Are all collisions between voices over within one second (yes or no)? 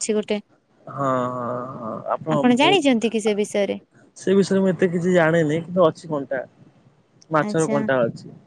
yes